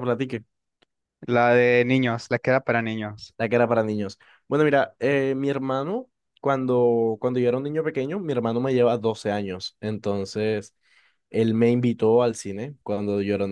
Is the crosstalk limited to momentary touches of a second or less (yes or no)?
yes